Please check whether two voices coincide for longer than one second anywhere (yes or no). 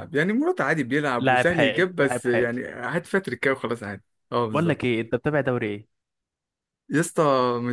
yes